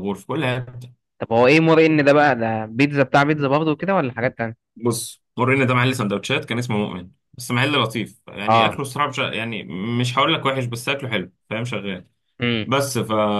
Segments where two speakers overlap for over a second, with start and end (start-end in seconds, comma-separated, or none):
none